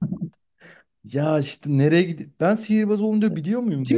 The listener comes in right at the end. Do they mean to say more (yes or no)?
yes